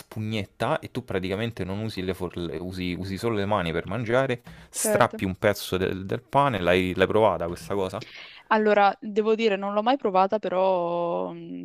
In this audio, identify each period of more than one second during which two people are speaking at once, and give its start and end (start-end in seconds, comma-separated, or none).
none